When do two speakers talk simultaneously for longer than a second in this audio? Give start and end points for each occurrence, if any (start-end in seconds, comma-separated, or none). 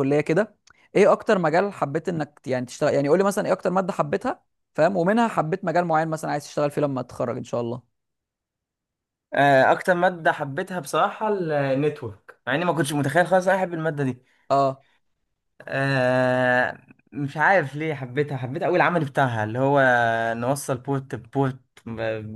none